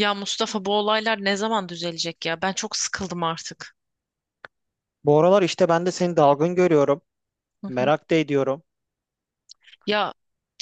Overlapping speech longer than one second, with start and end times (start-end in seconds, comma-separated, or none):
none